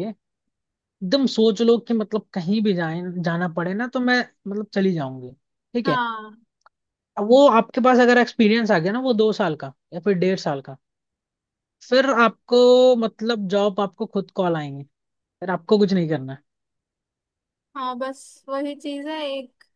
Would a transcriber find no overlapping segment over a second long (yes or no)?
yes